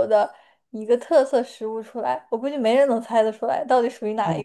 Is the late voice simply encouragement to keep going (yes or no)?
no